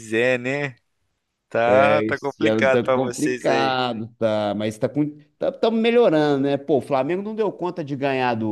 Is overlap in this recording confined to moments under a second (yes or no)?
no